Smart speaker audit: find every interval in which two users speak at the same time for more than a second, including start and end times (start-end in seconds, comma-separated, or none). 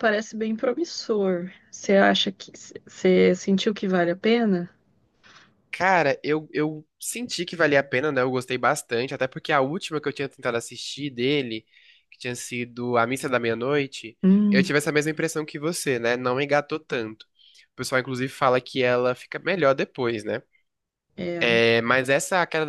none